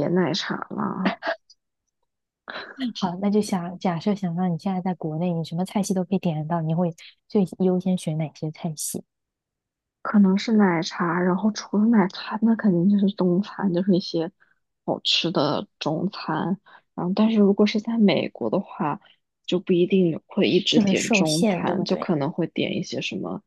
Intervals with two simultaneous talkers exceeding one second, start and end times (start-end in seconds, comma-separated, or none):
20.7-22.1